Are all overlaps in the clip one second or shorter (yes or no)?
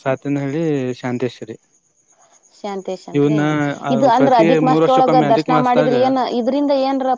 no